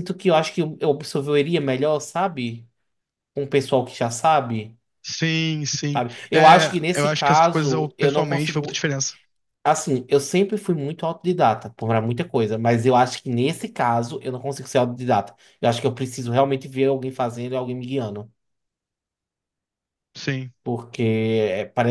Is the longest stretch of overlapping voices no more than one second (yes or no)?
no